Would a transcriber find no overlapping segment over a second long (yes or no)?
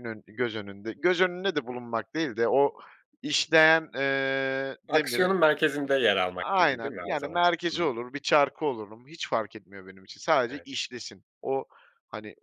no